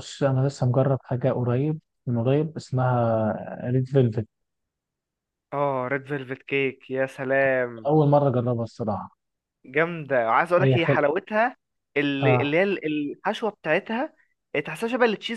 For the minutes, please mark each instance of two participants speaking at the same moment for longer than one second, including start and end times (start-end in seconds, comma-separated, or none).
none